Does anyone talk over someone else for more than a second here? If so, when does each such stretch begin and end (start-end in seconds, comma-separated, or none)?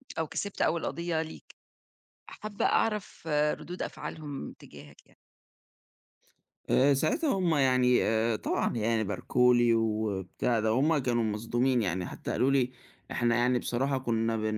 none